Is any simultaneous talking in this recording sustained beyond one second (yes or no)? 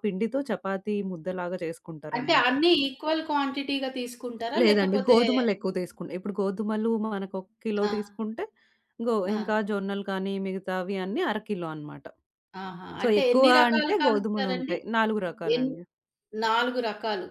yes